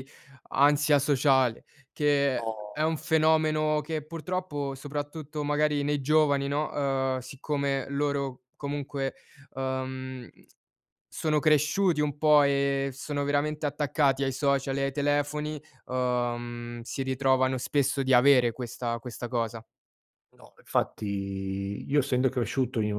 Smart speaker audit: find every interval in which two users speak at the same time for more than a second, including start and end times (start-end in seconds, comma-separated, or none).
none